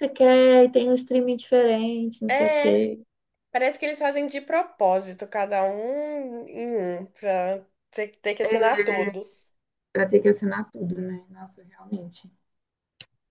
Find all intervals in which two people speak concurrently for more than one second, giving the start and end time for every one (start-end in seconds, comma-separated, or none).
none